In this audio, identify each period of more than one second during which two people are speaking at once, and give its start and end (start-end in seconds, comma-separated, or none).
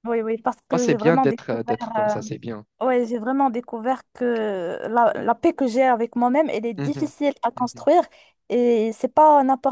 0.7-2.1